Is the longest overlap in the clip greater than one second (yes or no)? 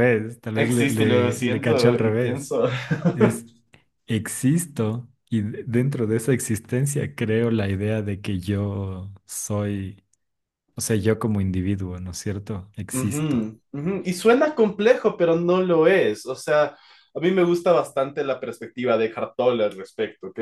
yes